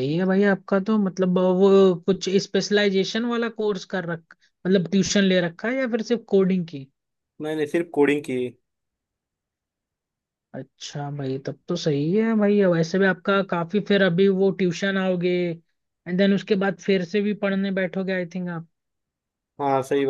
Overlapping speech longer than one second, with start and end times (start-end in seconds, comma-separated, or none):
none